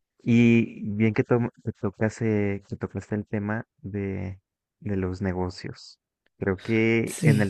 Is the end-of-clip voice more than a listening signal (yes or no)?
no